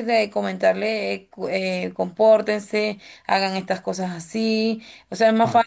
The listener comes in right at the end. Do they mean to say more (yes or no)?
no